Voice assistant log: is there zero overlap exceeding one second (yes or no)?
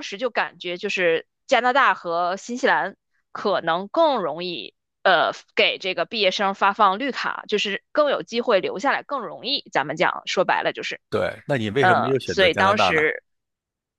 no